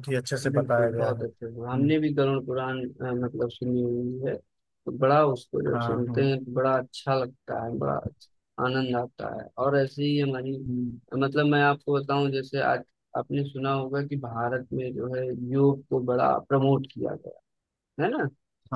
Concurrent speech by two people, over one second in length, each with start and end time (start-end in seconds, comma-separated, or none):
0.5-1.9